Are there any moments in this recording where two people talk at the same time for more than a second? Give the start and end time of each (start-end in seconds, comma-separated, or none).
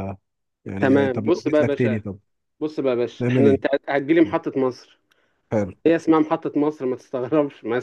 0.8-2.0